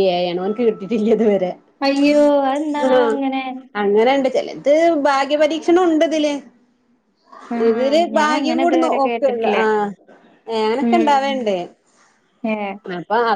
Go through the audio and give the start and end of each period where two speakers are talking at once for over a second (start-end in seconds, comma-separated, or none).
7.7-9.6